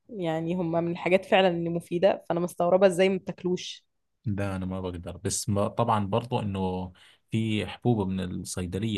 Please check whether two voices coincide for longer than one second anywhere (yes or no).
no